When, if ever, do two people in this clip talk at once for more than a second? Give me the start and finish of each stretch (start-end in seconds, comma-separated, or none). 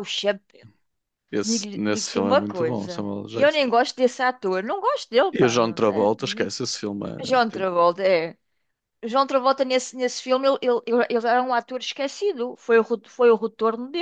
1.4-3.6, 5.3-6.5